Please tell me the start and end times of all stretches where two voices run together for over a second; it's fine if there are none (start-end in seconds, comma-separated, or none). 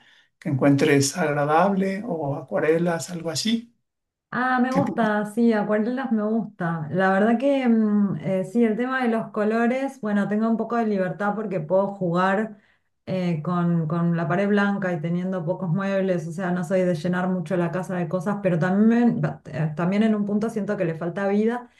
none